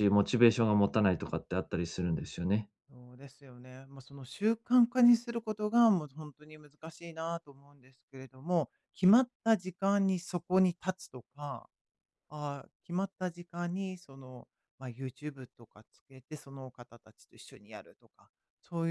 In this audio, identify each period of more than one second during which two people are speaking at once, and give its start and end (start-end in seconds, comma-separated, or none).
none